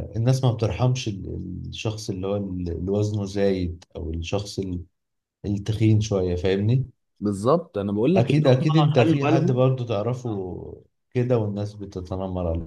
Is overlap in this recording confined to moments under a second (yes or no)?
no